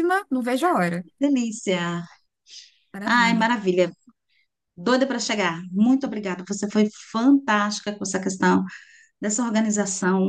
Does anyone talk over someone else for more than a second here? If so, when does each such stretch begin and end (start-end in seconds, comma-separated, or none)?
none